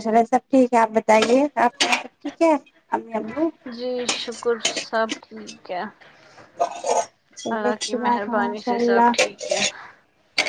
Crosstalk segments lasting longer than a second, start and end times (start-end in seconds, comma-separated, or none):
7.5-9.1